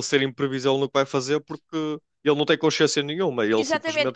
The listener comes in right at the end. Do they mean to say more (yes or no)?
yes